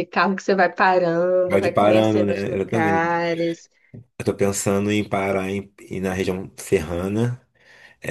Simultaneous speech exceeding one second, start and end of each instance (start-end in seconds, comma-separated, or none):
1.5-3.2